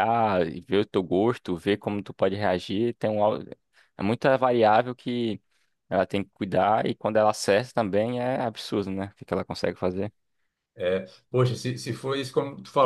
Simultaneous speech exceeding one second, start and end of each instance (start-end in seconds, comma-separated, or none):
none